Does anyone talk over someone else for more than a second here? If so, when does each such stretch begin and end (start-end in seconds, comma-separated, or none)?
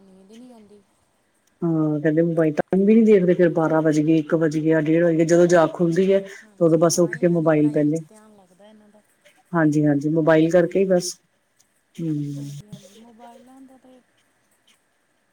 6.4-8.0